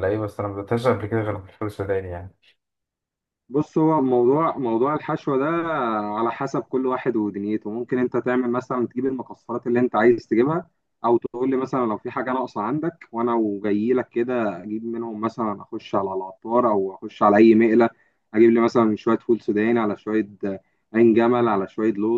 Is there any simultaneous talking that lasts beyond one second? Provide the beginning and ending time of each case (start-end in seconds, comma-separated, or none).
none